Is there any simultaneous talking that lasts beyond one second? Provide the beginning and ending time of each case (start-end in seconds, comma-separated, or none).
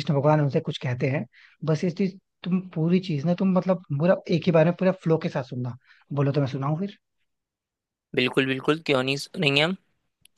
none